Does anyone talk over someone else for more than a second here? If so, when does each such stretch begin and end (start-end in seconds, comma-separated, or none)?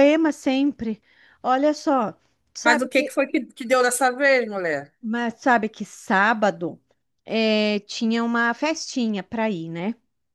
none